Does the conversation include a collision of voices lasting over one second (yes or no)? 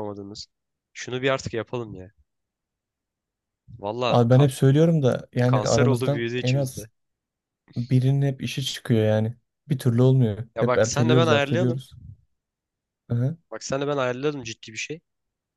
yes